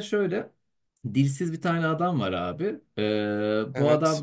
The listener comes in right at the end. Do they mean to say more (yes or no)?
no